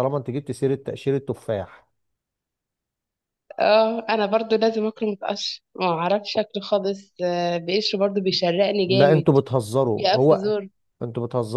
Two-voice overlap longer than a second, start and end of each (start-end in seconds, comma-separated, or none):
none